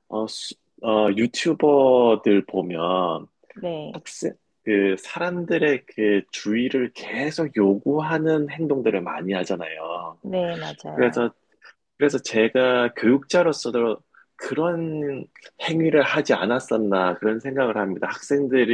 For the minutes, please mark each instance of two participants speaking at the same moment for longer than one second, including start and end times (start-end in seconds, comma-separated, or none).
none